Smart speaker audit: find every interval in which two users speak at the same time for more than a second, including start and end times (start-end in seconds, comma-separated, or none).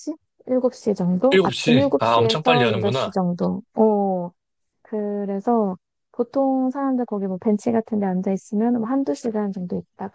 1.3-3.1